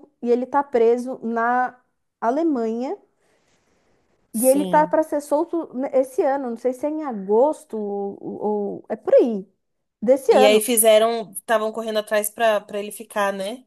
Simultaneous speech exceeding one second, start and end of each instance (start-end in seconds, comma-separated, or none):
none